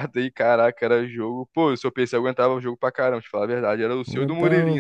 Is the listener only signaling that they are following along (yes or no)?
no